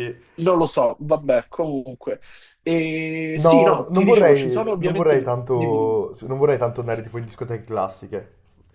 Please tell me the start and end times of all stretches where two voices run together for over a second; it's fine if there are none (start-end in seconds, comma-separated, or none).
3.4-6.0